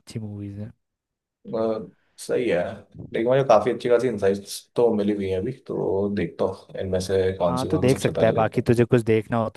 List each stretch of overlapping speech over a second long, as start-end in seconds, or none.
7.5-8.7